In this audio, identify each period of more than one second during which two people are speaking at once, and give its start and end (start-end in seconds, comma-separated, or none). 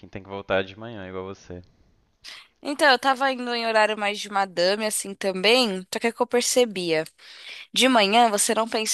none